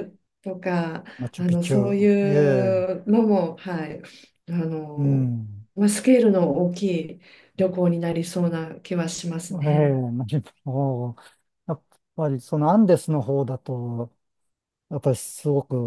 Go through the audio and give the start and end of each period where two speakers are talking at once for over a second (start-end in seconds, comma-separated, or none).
1.2-2.9